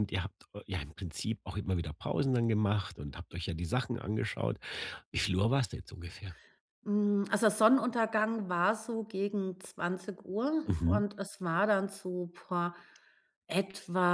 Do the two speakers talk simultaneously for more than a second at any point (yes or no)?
no